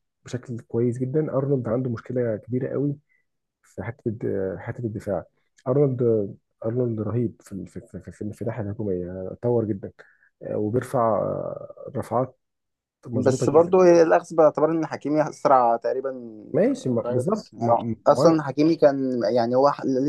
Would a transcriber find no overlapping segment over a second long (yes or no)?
no